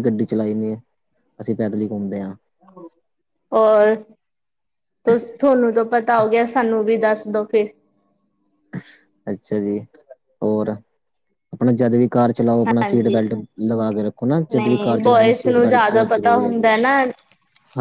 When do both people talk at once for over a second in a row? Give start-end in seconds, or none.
14.6-16.7